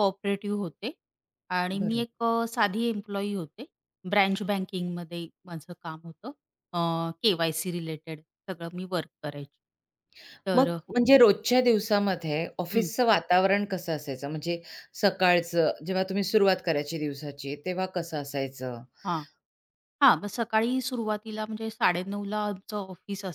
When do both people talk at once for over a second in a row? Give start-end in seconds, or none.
none